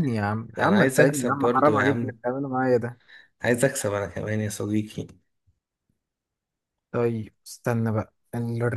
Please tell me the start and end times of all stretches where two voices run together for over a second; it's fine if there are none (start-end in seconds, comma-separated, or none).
0.6-2.2